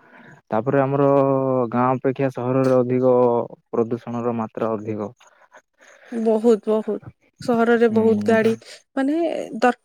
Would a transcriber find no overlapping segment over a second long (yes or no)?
yes